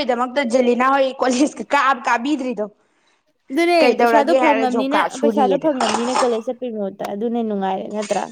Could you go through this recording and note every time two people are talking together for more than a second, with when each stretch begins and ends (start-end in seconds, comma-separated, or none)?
3.8-5.7